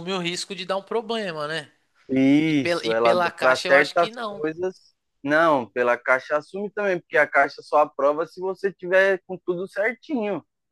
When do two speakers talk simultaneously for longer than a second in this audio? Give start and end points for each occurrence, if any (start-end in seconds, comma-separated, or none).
2.5-4.5